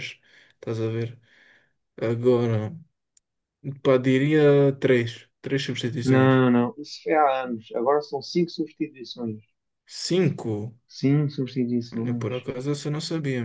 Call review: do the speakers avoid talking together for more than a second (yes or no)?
yes